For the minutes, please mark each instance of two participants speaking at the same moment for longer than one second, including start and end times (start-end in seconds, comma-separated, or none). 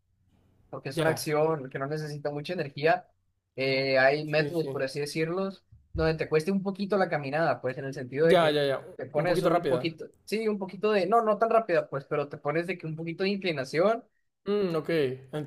8.2-9.9